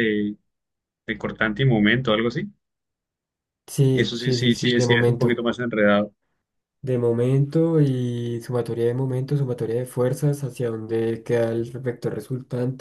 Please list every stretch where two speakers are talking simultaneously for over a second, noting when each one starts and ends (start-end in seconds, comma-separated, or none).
3.9-5.4